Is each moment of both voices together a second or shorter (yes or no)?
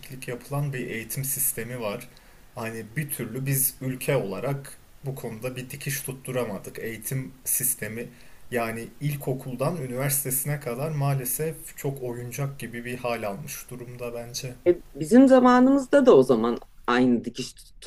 yes